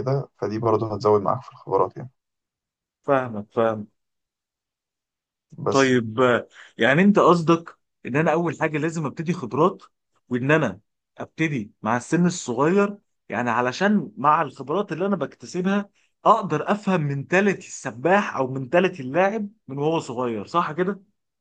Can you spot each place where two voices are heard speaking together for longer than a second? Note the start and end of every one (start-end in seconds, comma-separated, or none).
none